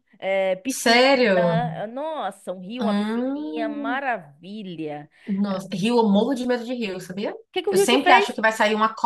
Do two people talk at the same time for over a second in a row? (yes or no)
yes